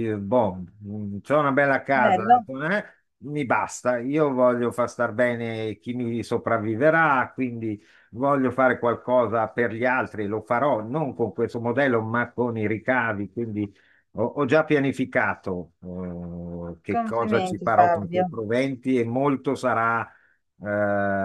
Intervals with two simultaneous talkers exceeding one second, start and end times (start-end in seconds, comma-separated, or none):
16.9-18.2